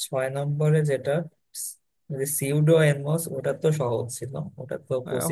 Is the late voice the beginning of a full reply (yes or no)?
yes